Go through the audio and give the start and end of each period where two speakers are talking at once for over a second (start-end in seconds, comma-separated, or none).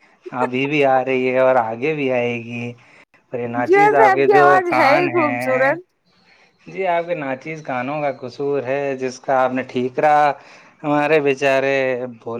3.6-5.7